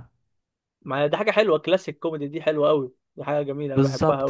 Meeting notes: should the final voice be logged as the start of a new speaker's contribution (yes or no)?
yes